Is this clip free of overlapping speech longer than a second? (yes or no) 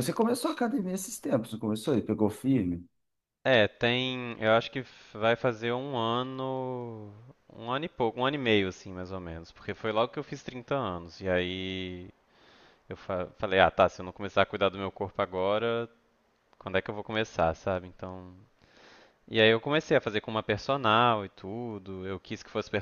yes